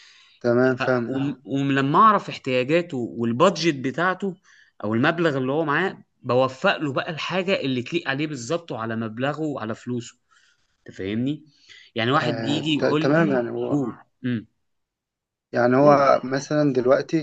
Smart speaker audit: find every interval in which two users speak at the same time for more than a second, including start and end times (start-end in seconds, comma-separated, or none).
12.2-13.5